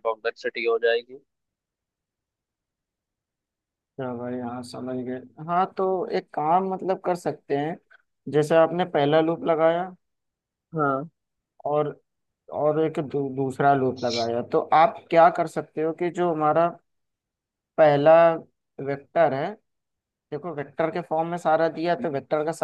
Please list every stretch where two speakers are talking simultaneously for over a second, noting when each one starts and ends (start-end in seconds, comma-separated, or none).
none